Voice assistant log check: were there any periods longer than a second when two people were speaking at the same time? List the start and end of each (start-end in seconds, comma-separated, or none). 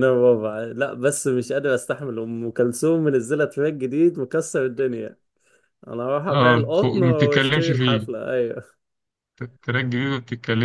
6.3-8.1